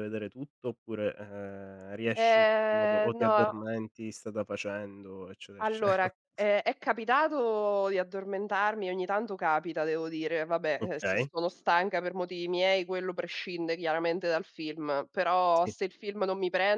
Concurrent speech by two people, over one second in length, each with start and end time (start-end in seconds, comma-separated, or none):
2.1-3.5